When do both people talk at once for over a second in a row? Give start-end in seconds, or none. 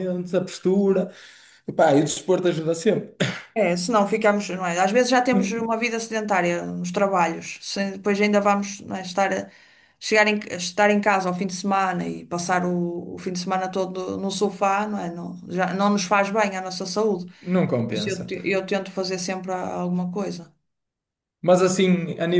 none